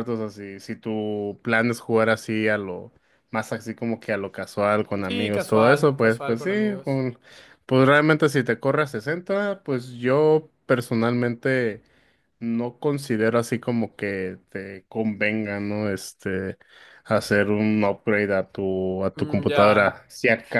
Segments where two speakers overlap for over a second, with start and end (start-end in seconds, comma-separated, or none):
5.0-7.0